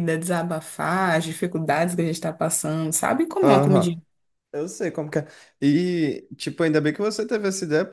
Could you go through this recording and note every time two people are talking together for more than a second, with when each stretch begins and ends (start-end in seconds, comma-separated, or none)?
none